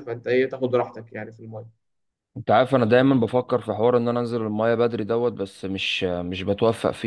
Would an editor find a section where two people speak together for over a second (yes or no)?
no